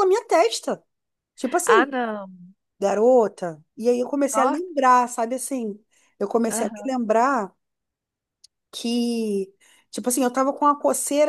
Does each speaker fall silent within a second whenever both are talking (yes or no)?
yes